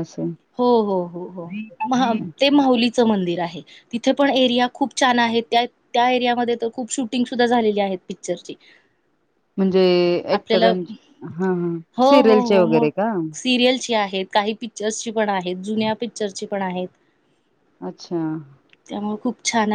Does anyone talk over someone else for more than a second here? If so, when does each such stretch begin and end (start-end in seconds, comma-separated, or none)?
none